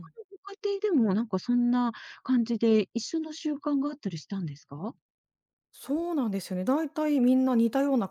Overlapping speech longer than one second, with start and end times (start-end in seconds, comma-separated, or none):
none